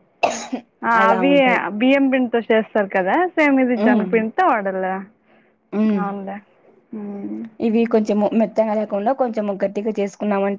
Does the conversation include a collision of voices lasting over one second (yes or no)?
no